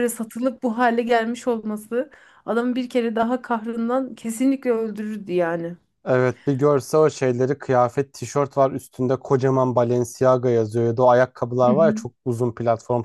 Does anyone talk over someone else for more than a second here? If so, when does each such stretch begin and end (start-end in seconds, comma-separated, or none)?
none